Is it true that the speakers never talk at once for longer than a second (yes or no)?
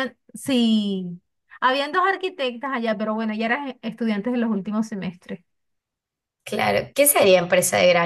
yes